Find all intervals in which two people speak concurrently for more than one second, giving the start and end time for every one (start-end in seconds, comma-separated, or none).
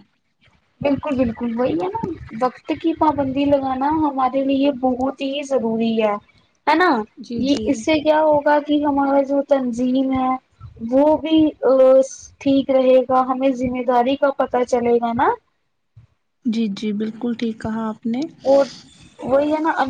none